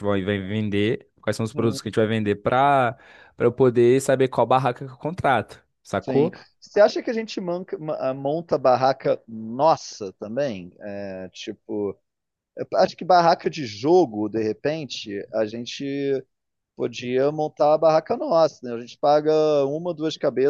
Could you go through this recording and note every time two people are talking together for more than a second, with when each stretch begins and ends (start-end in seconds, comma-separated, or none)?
none